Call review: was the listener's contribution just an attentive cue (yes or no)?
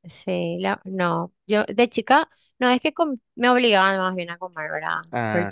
yes